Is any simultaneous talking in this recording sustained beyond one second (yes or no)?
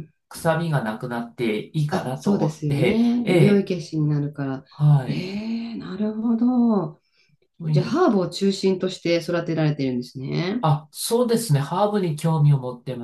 yes